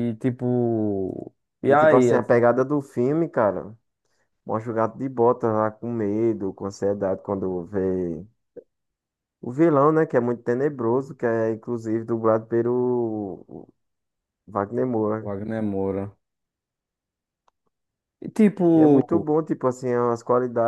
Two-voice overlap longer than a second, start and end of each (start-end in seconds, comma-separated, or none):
none